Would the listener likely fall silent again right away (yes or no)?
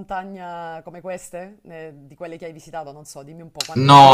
no